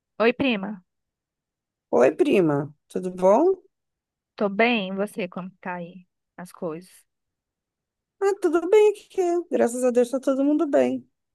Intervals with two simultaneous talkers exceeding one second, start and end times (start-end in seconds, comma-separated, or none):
none